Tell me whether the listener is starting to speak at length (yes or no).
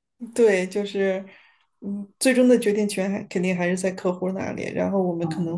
no